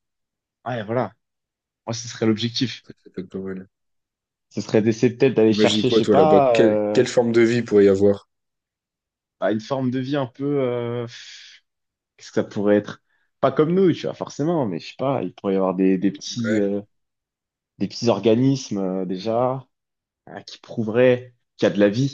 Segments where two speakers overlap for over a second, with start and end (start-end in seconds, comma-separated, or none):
5.5-7.0